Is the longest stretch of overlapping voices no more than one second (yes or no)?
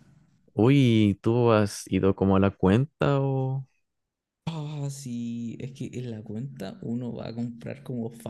yes